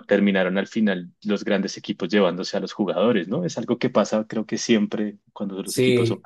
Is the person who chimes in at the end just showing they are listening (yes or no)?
no